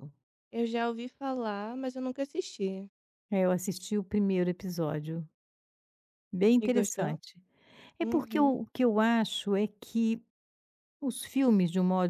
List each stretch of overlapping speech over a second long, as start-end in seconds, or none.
none